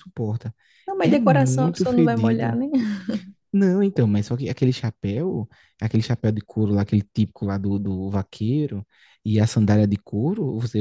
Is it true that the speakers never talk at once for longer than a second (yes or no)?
no